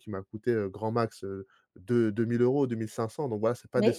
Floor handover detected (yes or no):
yes